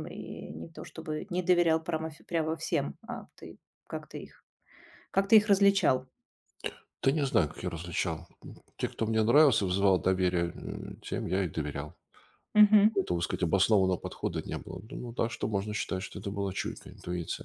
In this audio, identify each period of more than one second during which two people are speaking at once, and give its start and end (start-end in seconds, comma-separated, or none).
none